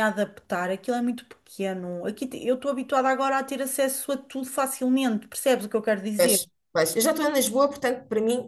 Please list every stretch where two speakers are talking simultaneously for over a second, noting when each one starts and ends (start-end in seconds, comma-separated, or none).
none